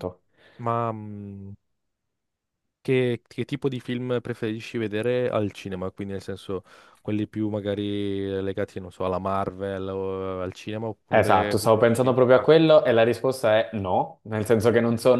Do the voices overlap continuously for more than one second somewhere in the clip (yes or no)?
yes